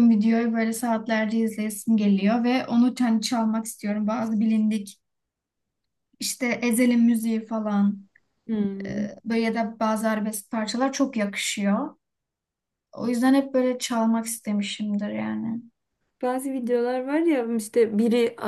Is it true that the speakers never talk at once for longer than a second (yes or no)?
yes